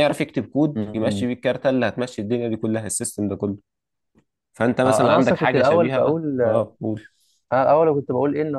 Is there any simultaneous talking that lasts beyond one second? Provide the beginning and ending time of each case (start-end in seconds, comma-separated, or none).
4.8-6.4